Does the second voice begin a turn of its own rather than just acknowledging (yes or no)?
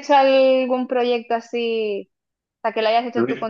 no